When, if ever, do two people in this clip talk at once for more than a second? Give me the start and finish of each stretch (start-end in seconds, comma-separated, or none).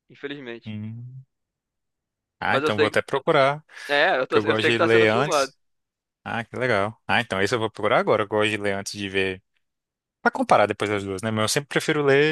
4.3-5.5